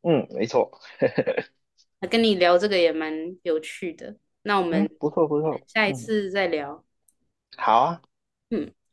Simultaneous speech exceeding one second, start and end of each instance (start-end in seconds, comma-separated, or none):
4.7-6.1